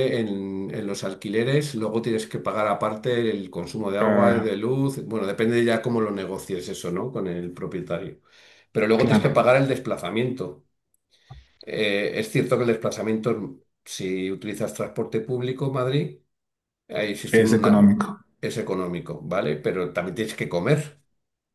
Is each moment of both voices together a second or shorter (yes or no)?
yes